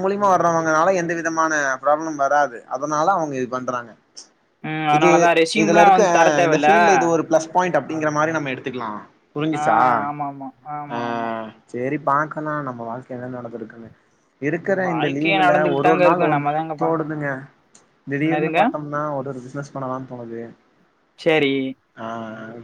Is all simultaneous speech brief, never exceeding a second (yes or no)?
no